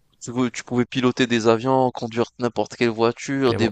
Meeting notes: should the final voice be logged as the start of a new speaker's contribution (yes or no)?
yes